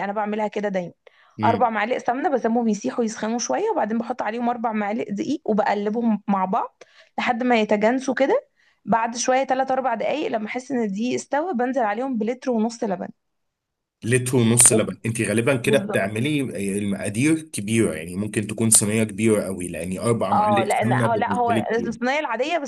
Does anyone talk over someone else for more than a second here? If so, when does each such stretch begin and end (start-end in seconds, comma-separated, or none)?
20.3-22.0